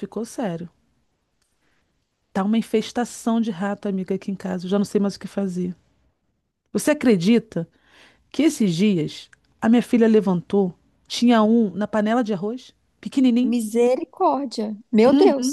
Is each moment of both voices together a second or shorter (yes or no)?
yes